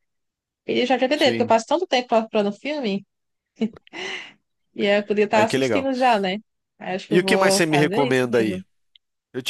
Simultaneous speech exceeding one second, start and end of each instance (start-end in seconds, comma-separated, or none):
7.1-8.6